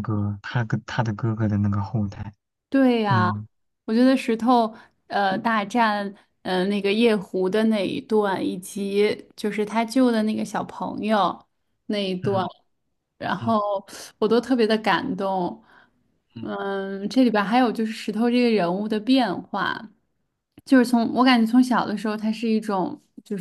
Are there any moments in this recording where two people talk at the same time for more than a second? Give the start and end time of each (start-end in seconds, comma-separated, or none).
none